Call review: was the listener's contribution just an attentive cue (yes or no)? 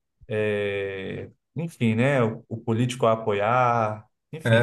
no